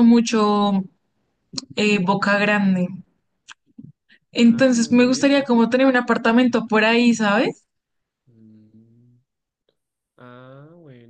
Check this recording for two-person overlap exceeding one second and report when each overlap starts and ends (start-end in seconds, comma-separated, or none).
4.4-5.7